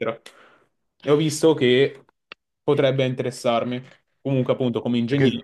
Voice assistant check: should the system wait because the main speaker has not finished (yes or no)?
yes